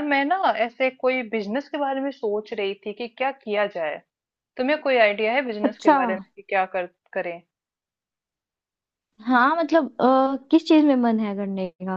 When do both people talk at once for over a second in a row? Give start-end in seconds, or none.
none